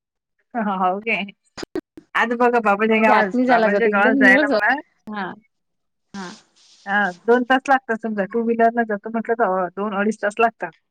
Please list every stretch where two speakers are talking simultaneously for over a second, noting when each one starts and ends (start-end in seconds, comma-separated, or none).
2.9-4.7